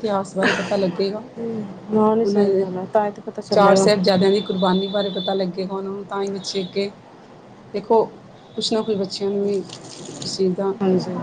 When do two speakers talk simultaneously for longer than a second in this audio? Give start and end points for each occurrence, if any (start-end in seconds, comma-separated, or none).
none